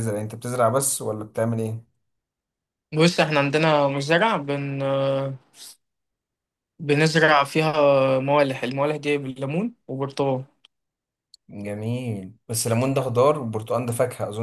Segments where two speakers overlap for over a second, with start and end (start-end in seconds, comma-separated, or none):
none